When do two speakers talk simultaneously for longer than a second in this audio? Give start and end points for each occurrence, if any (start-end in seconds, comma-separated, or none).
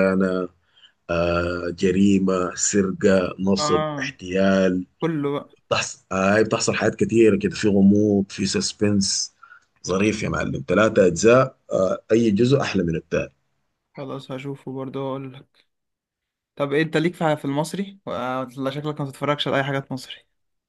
none